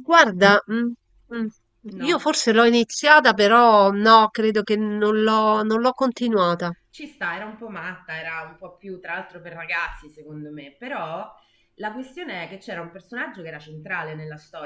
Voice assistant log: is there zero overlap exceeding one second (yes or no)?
yes